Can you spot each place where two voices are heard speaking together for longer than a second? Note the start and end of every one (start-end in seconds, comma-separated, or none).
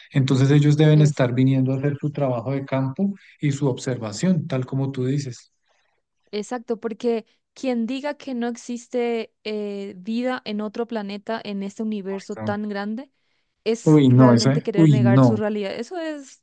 13.8-15.4